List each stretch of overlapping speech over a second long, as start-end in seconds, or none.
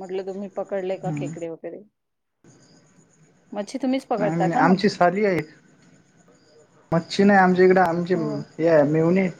none